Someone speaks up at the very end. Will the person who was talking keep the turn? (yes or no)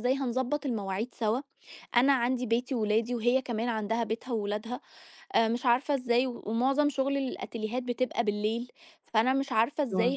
yes